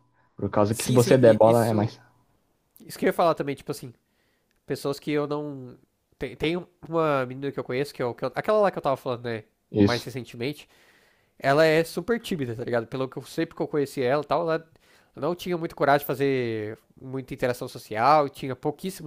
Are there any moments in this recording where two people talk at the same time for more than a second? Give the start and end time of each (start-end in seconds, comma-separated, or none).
0.7-1.9